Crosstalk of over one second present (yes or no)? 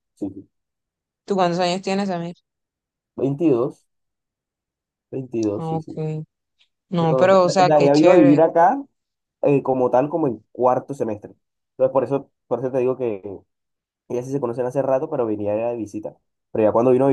yes